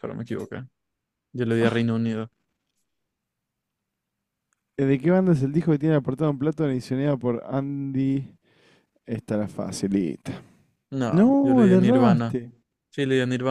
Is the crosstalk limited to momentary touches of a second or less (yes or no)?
no